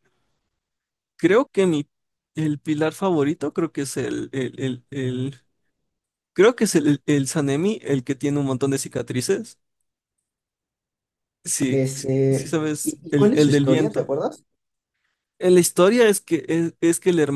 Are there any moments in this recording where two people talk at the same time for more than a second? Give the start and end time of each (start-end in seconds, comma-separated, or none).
11.7-14.2